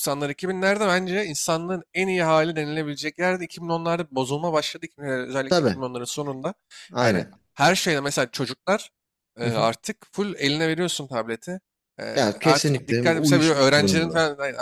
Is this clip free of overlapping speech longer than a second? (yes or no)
no